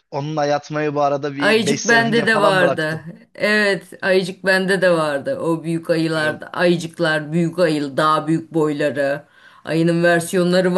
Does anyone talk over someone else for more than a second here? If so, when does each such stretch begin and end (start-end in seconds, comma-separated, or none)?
1.4-3.0